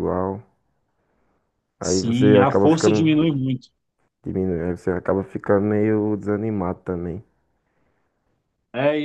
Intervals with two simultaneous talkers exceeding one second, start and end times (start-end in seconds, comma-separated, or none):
1.8-3.1